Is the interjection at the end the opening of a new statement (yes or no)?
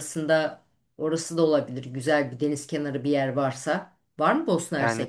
yes